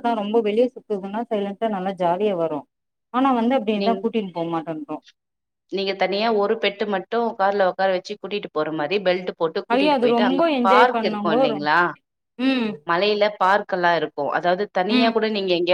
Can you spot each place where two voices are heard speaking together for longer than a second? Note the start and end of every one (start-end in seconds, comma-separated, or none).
9.7-11.5